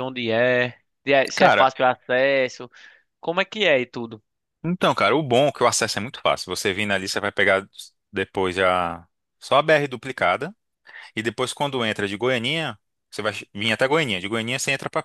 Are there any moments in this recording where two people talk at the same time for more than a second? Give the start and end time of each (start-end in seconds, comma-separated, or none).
none